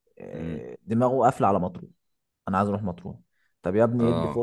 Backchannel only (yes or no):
yes